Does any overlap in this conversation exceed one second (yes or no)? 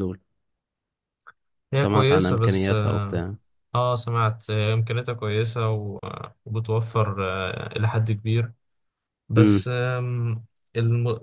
yes